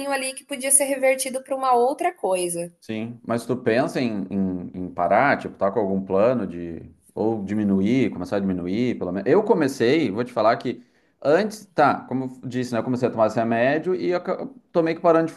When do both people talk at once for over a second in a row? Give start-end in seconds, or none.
none